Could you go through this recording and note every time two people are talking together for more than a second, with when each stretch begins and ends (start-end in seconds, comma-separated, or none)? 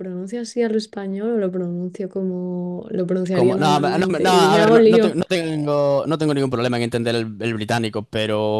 3.3-5.2